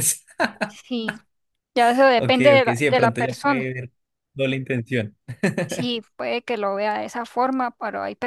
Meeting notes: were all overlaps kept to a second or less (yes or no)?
no